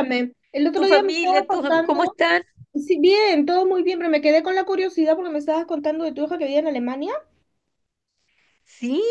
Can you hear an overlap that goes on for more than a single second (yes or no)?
yes